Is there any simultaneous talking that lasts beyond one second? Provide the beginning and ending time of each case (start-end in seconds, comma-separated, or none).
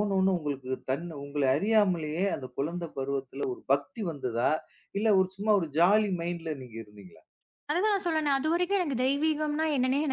none